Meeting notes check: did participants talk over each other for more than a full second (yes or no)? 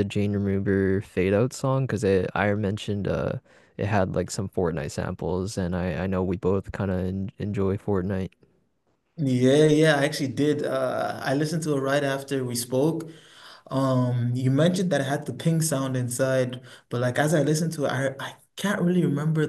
no